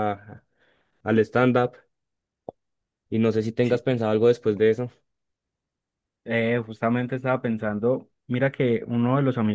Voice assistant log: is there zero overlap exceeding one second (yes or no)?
yes